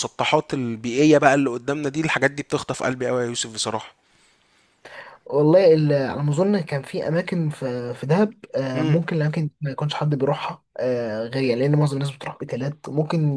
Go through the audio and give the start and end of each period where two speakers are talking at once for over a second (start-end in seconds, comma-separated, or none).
none